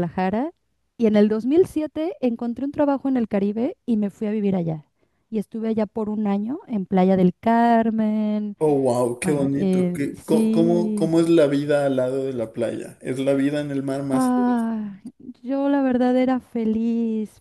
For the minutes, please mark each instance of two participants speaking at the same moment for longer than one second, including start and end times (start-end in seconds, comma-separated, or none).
9.2-11.2